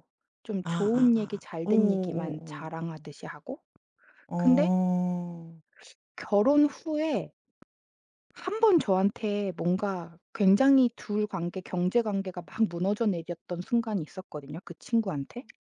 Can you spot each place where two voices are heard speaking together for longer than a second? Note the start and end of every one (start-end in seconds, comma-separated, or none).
0.6-2.7